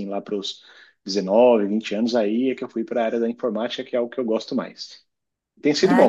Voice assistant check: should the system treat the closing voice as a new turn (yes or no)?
no